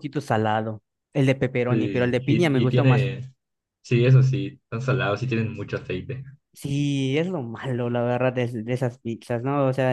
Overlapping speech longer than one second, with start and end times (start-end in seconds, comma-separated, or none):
1.7-3.1